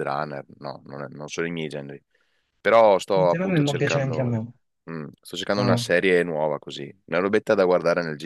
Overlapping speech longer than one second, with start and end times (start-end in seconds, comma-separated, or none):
3.1-4.5